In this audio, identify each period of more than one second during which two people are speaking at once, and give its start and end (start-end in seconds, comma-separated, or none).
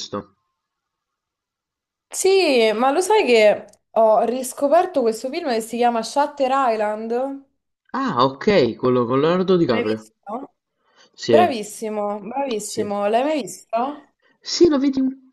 none